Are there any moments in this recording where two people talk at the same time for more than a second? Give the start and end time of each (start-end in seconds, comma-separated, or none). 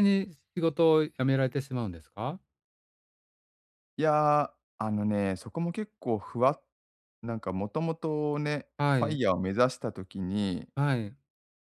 none